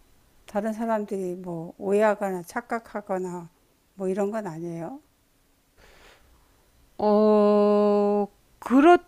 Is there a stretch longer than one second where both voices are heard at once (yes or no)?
no